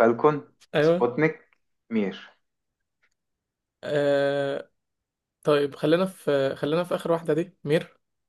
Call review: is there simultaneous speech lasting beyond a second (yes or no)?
no